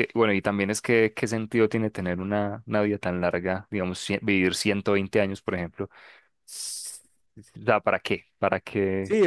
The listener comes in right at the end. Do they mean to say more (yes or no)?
yes